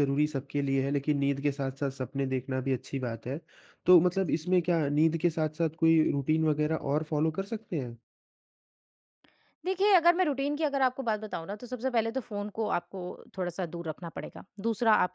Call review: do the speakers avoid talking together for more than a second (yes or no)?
yes